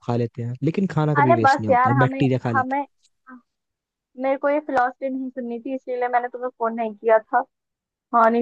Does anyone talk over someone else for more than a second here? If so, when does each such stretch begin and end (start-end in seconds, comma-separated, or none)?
1.2-2.9